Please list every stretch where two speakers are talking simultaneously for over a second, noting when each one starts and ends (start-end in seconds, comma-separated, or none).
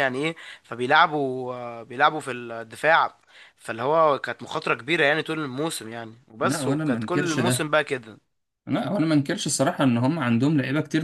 6.4-7.7